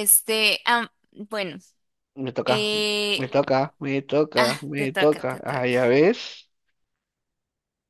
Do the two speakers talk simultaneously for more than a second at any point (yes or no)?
yes